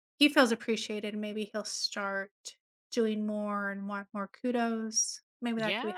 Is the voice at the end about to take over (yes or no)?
yes